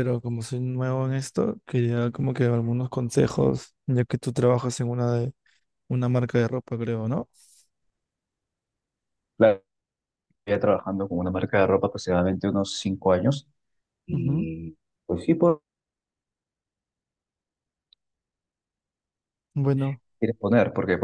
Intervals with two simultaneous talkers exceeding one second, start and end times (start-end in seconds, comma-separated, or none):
none